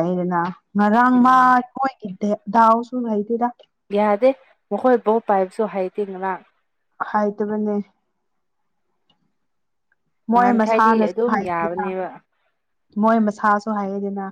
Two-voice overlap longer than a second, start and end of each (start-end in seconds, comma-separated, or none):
10.3-11.9